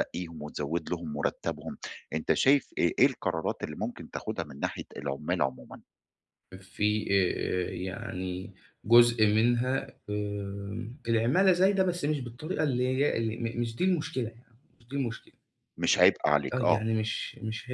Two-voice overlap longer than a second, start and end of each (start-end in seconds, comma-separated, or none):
none